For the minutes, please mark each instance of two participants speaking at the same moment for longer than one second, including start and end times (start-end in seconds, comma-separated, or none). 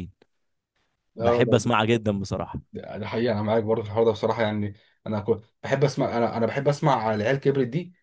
none